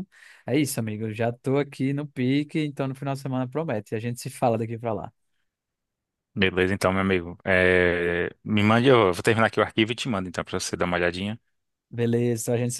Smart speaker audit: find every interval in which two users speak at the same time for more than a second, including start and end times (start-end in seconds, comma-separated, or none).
none